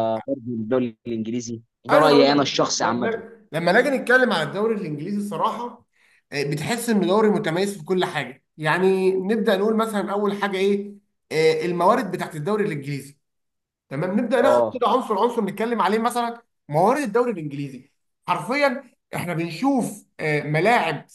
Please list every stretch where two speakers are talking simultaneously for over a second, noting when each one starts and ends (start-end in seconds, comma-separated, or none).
1.9-3.2